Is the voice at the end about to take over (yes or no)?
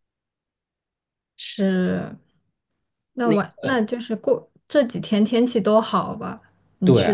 yes